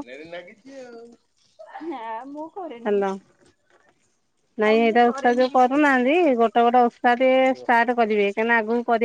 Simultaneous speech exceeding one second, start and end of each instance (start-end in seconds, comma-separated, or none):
4.6-6.1